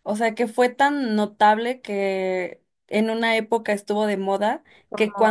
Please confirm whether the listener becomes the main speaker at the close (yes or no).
no